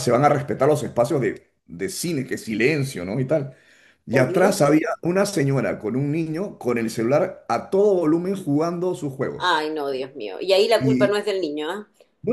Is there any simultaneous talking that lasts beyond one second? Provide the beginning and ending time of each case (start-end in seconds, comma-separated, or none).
none